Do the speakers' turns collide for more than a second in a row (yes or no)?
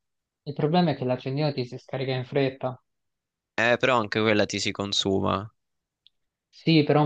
no